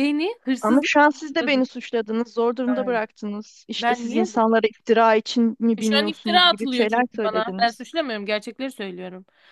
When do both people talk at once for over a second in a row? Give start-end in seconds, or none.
5.8-7.8